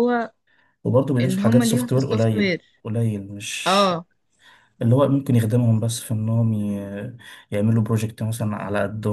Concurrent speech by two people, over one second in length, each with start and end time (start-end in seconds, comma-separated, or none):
1.2-2.6